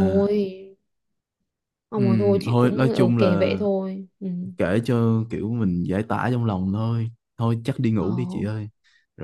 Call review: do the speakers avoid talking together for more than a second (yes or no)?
no